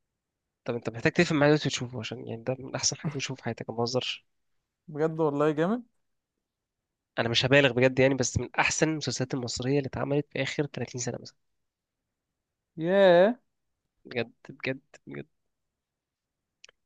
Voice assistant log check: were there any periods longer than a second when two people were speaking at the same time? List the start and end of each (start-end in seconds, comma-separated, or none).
none